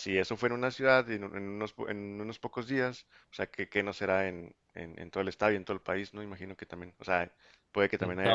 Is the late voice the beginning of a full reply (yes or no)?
no